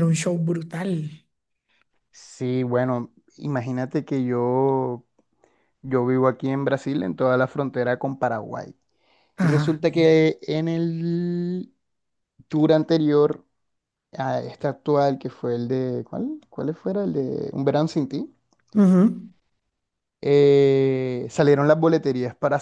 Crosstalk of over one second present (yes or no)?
no